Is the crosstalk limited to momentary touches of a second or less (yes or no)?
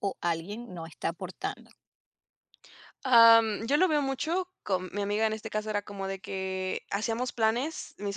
yes